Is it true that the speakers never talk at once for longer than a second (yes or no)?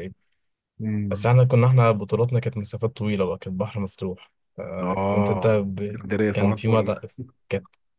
no